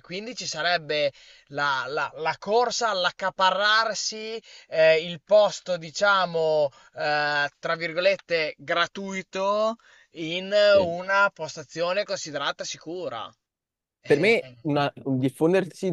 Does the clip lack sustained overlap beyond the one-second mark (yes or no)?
yes